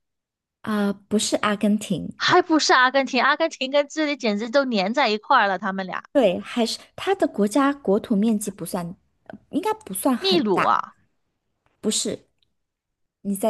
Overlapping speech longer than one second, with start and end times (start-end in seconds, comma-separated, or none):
none